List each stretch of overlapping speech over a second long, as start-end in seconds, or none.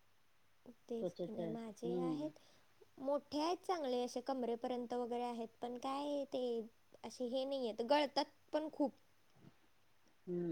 1.0-2.3